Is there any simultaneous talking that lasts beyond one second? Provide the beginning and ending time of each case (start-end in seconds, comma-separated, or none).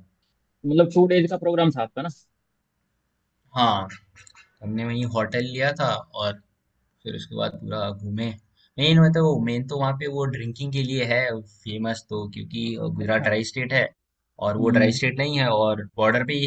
none